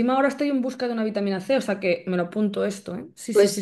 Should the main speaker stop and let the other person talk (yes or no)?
yes